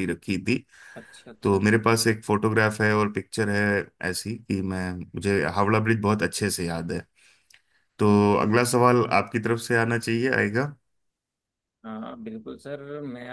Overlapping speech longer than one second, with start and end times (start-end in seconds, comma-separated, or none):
none